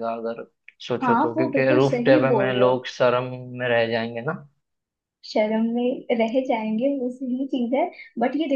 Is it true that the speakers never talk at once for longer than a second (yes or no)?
no